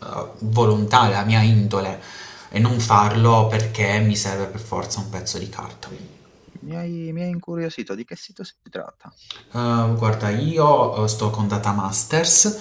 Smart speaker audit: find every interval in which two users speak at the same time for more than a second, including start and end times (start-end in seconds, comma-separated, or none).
none